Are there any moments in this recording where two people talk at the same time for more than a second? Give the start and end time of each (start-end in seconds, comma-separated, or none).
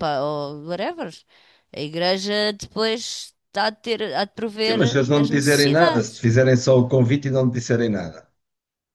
4.7-6.3